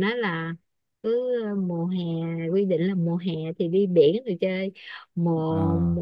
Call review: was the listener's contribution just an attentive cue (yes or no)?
yes